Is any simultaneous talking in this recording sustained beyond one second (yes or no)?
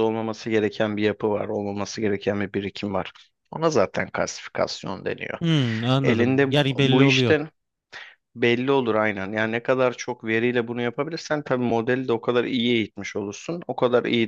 yes